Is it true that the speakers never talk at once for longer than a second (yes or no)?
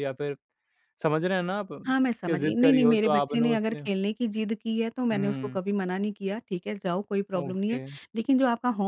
no